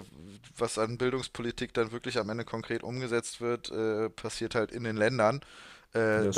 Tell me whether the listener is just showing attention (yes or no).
yes